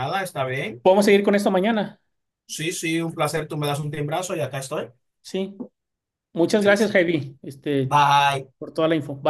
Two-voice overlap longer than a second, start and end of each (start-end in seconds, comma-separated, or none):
none